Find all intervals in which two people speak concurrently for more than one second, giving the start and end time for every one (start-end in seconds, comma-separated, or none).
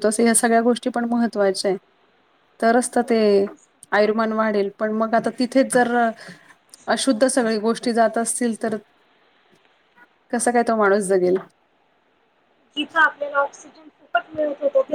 none